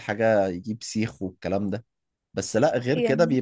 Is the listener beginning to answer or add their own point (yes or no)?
no